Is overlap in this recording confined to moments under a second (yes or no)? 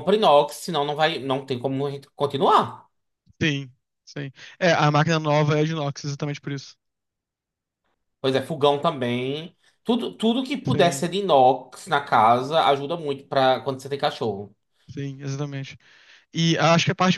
yes